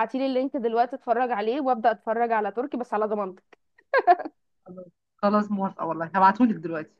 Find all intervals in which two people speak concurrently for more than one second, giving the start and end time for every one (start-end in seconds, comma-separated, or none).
none